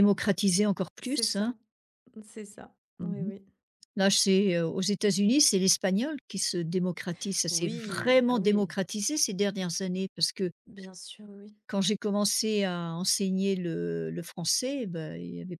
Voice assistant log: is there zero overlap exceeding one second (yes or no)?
no